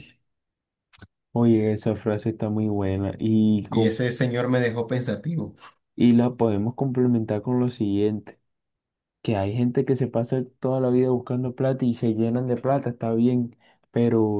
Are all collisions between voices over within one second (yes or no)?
yes